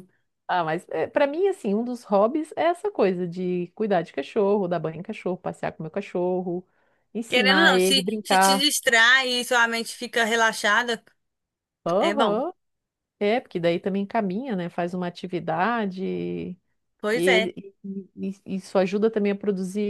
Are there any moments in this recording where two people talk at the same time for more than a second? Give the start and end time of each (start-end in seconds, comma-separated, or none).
7.3-8.7